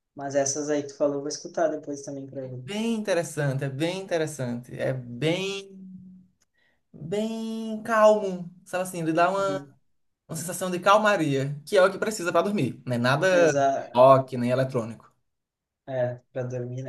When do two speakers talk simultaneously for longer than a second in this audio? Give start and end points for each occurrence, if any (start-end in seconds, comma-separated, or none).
none